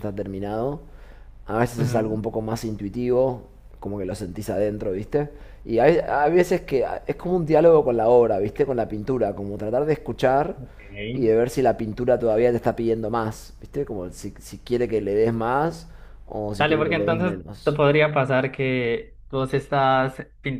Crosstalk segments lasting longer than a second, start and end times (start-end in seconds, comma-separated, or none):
16.6-17.8